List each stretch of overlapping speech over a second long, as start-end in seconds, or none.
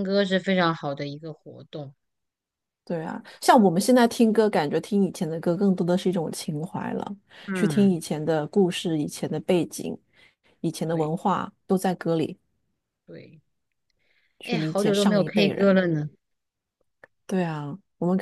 14.4-15.8